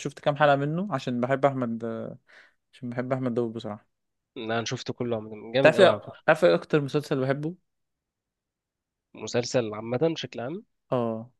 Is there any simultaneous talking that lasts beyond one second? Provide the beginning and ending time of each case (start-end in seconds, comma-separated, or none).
none